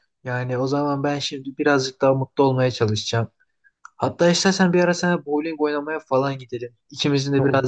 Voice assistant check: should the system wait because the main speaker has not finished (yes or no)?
yes